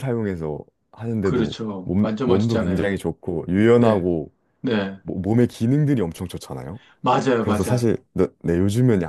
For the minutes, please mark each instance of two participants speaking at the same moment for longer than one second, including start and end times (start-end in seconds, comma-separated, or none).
1.2-3.0